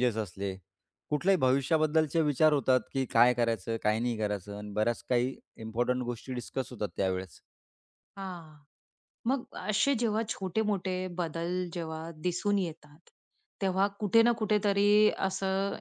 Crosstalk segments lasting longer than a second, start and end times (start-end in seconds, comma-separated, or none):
none